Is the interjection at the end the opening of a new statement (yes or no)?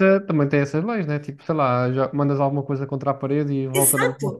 yes